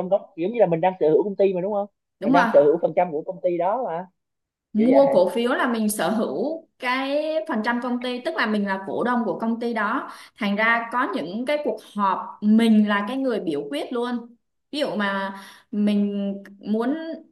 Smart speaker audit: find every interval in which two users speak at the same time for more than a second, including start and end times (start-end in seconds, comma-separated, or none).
none